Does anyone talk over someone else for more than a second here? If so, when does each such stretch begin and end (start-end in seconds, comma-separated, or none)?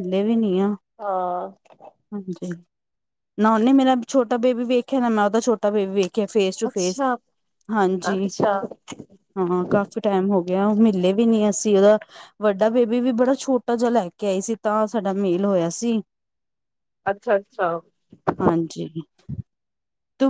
none